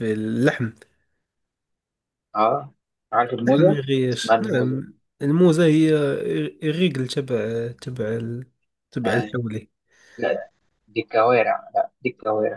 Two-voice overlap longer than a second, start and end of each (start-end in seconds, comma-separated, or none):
3.4-4.8